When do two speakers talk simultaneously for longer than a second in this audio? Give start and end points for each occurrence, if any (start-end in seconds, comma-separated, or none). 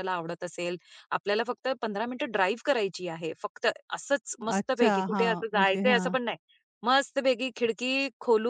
4.6-6.2